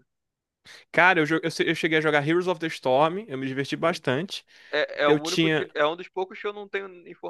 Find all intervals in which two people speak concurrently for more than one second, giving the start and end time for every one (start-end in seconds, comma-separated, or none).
none